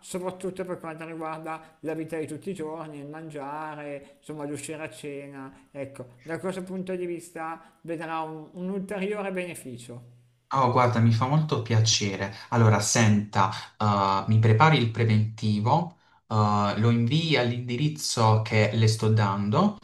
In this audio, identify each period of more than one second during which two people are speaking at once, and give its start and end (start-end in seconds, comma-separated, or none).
none